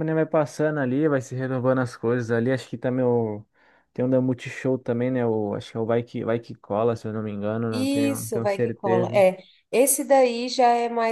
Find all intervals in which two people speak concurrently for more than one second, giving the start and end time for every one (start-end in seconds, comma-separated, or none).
7.7-9.2